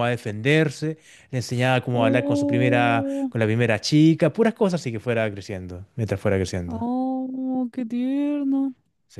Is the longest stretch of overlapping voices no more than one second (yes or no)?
no